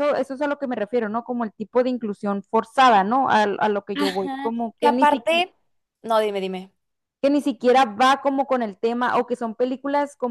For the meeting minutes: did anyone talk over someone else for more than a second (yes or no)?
yes